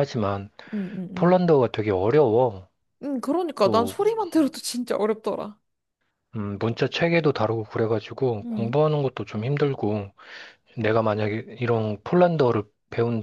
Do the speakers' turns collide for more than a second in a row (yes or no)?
no